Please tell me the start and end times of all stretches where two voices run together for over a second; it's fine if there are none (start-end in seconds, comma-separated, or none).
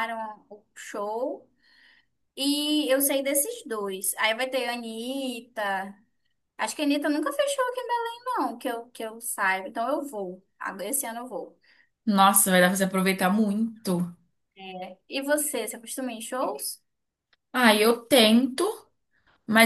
none